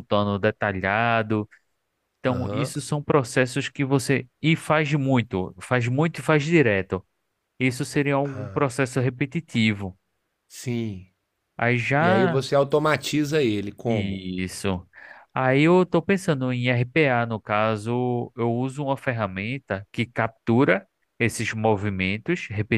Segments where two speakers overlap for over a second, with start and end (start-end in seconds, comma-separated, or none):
none